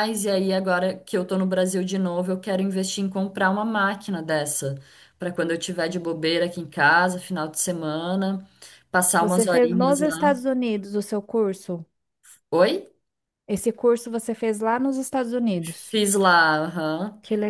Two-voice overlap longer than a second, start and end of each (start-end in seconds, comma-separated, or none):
9.2-10.4